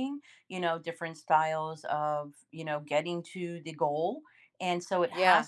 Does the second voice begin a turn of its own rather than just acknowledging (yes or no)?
no